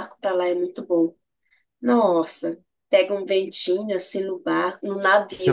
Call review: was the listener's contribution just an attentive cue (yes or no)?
no